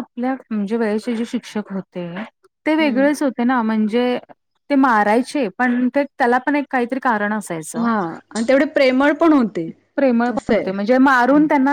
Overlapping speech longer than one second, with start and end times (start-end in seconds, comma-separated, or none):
none